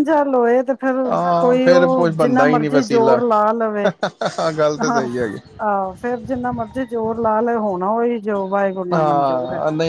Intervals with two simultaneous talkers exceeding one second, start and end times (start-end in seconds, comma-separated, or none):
1.4-3.2